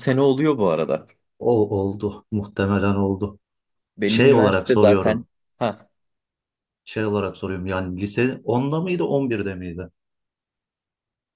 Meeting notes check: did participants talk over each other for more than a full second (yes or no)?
yes